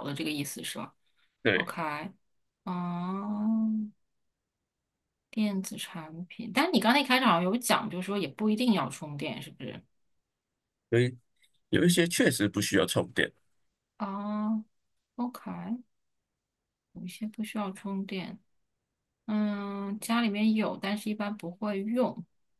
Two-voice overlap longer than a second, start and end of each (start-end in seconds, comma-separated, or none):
none